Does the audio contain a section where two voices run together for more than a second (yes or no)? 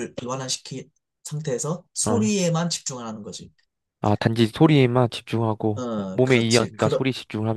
yes